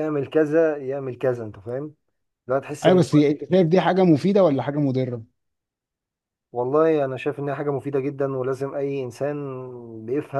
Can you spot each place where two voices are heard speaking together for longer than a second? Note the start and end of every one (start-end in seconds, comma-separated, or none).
none